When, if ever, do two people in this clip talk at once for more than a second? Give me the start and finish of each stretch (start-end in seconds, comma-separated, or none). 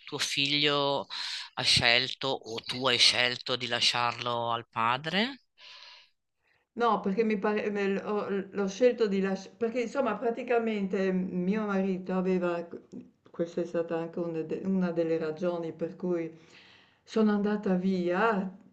none